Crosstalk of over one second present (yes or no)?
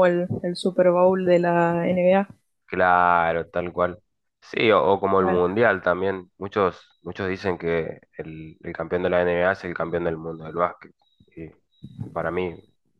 no